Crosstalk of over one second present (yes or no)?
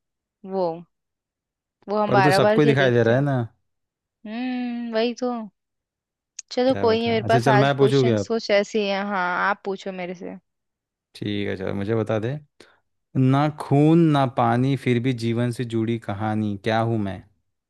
yes